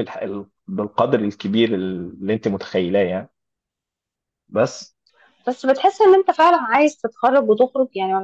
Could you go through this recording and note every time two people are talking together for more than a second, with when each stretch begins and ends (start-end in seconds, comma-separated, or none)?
none